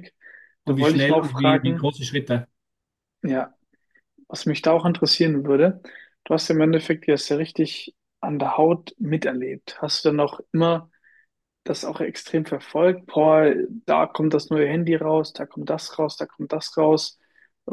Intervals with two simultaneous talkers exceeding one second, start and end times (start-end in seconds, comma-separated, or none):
0.7-1.9